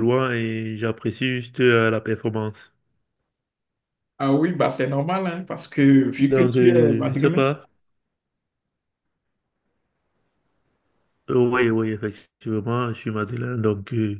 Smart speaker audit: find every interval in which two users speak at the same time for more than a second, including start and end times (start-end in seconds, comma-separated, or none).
6.3-7.5